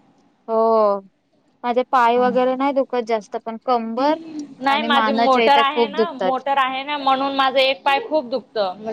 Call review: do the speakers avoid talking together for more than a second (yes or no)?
no